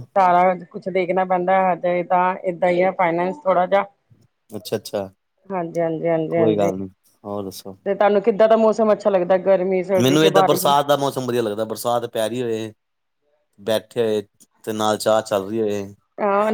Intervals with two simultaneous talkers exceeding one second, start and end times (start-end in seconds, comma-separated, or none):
none